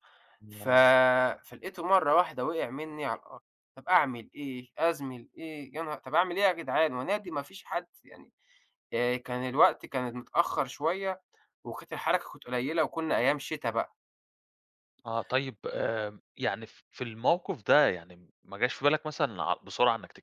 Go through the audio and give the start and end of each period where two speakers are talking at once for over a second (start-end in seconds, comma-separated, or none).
none